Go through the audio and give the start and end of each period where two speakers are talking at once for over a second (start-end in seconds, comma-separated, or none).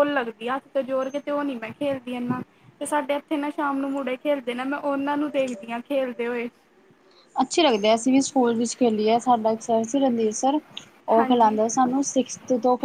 none